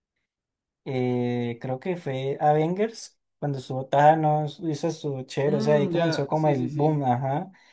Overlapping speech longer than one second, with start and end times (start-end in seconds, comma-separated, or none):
5.5-7.0